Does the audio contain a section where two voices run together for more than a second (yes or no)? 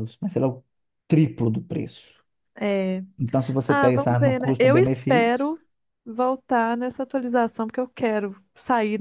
yes